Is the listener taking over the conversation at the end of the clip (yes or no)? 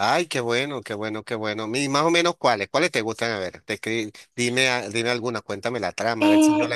yes